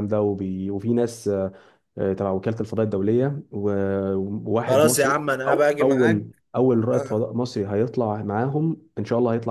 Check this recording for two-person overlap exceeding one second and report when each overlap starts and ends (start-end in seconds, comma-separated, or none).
4.7-6.3